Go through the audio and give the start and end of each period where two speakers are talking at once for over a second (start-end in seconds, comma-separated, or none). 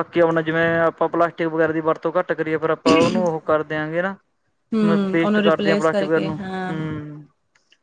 4.9-6.7